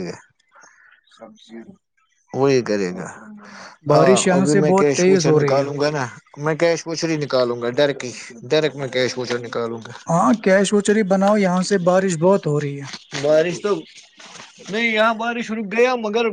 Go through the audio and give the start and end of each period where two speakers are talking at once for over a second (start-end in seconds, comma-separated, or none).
3.9-5.7